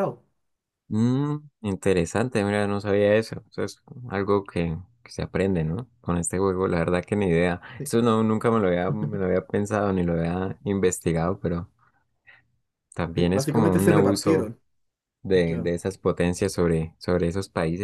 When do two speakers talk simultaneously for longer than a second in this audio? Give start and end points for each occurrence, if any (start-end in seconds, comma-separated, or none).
13.2-14.5